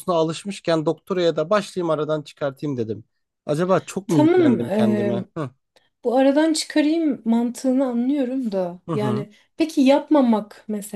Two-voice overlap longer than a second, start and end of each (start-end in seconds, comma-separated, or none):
none